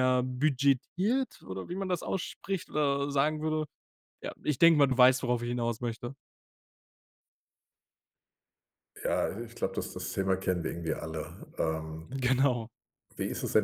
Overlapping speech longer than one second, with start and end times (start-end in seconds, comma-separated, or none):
none